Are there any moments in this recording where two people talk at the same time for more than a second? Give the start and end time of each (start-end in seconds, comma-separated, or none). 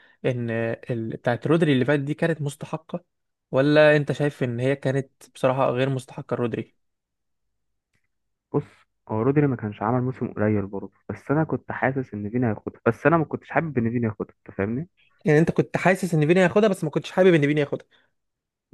none